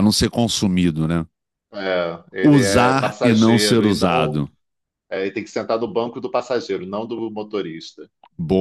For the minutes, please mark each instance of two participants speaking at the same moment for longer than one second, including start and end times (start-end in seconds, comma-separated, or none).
2.4-4.4